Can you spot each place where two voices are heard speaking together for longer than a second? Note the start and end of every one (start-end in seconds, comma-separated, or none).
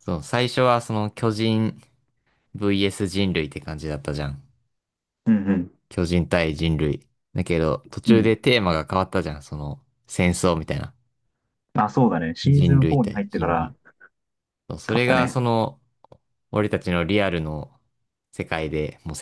12.4-13.7